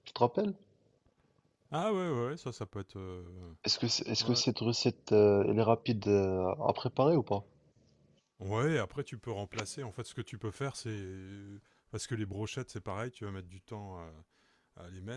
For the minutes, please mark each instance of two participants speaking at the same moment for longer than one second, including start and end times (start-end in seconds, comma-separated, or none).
none